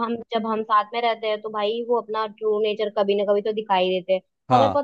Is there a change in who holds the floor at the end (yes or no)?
no